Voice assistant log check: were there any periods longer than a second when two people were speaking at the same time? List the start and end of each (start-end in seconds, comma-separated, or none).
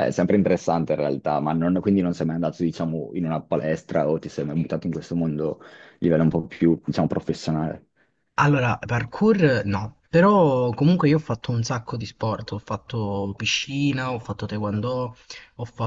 none